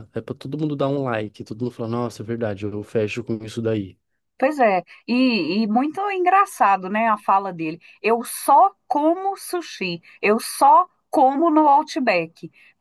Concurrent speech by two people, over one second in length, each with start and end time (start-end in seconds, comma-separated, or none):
none